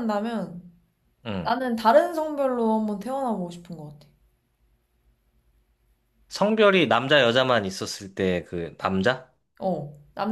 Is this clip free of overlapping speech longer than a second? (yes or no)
yes